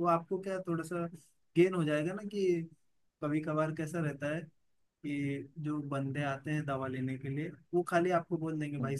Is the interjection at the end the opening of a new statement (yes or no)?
no